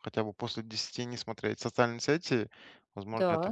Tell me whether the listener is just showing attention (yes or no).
yes